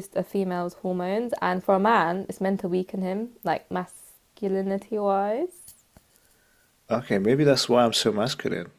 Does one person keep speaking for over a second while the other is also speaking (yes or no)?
no